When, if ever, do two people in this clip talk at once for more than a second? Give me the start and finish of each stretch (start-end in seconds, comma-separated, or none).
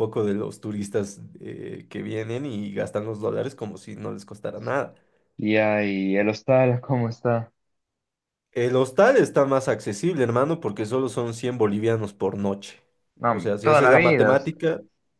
13.3-14.7